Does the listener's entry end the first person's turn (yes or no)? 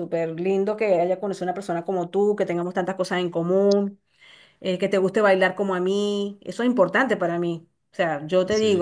no